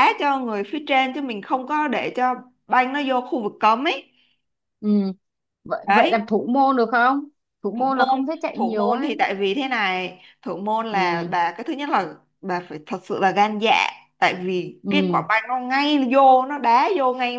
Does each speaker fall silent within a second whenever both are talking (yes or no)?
no